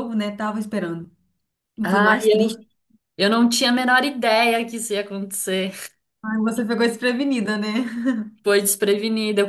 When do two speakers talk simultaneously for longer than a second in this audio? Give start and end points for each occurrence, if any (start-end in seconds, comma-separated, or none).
none